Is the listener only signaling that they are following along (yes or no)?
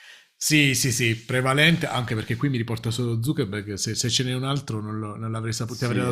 no